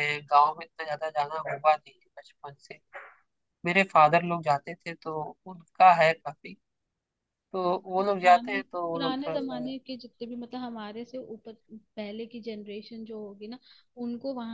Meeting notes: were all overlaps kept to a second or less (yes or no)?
no